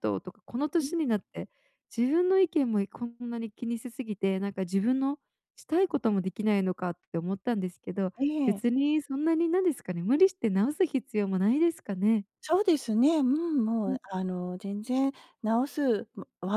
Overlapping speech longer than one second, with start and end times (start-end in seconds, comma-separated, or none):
none